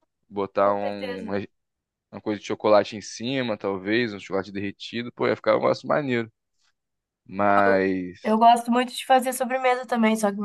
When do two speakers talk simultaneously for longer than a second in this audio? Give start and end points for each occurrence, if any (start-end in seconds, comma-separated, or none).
none